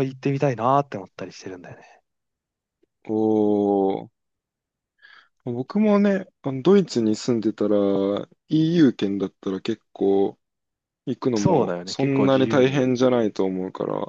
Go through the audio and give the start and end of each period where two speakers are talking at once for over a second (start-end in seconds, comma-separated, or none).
11.4-12.8